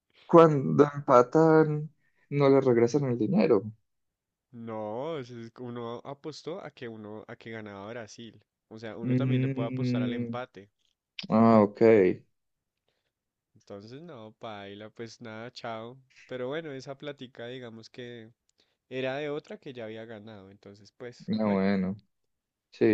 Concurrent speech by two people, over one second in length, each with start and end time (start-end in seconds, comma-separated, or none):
9.0-10.3